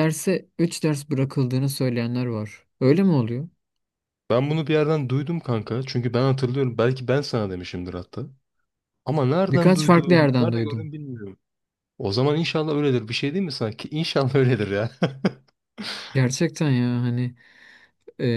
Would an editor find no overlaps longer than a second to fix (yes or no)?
no